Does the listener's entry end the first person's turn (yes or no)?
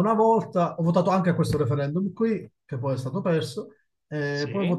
no